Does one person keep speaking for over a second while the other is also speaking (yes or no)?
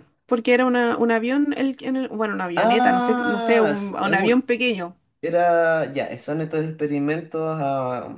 yes